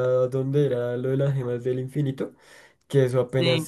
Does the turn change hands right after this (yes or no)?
no